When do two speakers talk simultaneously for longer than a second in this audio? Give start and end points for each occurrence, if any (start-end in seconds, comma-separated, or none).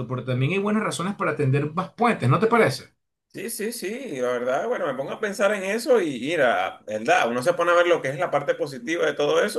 none